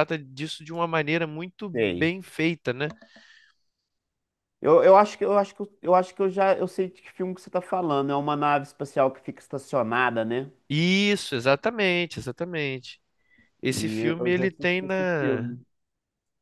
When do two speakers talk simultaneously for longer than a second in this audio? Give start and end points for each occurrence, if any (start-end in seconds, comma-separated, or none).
13.7-15.5